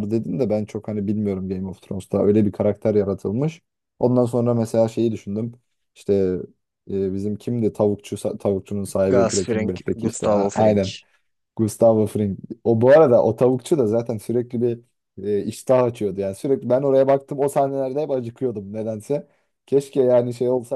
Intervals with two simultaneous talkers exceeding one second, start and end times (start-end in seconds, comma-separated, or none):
9.1-10.8